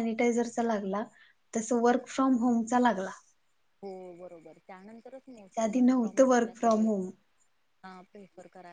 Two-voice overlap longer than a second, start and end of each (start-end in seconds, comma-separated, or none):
5.5-6.9